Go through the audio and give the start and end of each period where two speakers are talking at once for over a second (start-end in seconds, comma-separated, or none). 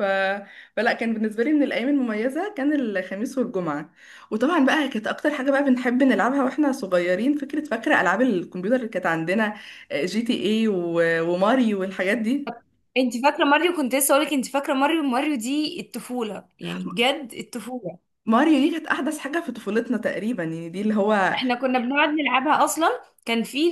none